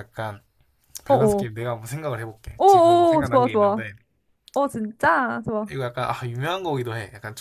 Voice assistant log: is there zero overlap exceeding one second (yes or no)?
no